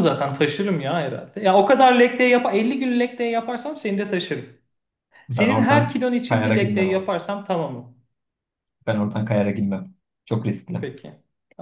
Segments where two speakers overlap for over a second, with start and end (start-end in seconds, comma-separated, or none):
5.3-7.1